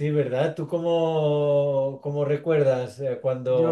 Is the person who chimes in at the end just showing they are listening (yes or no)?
no